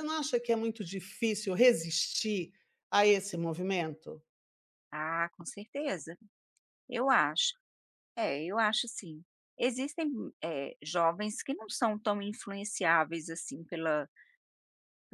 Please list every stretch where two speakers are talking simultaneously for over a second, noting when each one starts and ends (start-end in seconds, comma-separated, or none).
none